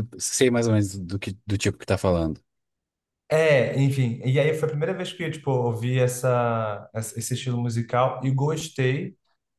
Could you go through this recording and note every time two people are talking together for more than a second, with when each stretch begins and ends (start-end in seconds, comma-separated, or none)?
none